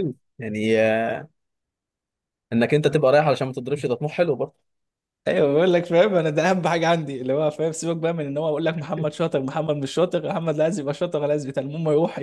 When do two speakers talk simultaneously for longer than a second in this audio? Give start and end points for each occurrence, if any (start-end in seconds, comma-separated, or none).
none